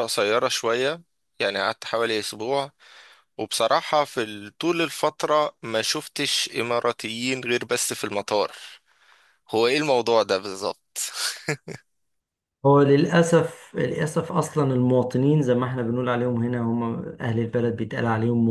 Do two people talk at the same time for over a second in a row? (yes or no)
no